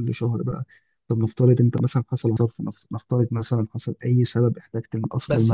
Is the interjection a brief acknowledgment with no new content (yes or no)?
no